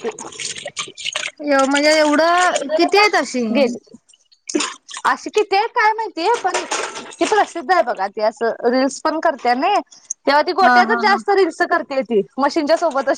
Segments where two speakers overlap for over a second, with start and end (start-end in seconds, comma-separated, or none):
none